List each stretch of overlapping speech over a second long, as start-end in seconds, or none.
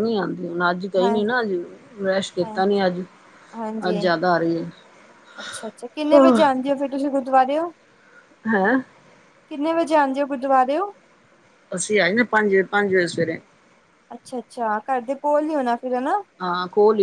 none